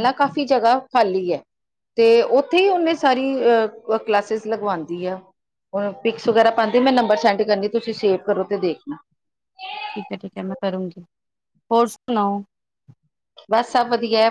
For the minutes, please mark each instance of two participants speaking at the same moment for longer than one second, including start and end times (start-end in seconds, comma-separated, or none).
none